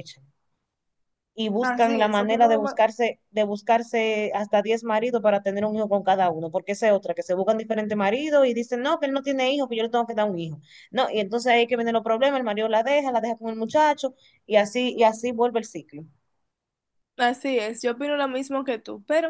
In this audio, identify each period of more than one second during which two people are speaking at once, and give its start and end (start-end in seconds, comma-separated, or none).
1.6-2.8